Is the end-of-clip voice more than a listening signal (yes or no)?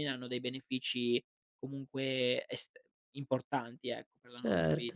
yes